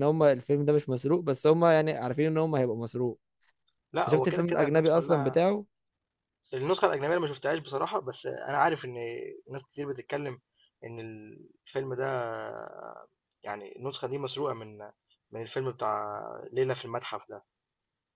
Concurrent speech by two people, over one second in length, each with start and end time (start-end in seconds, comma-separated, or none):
4.0-5.4